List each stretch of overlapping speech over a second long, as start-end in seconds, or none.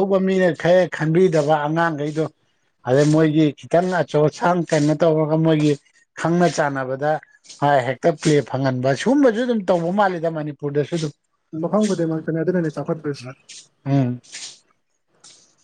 none